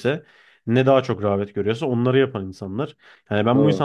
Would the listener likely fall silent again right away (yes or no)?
yes